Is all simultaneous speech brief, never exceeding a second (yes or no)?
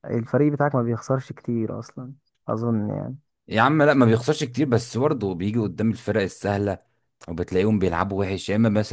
yes